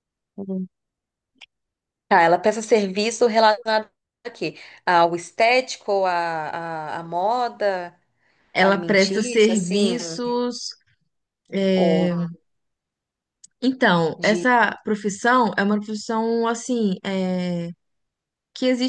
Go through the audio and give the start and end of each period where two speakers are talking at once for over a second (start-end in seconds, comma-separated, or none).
8.6-10.0